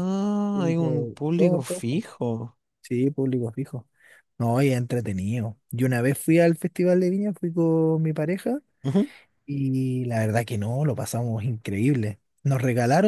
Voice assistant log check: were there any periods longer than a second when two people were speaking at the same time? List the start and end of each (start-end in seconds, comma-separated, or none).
0.5-1.9